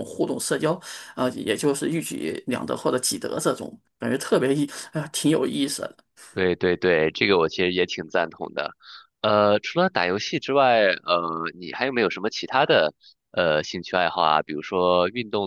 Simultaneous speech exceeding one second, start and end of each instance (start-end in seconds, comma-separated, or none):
none